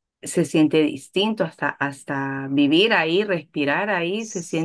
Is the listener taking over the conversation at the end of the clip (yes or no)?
no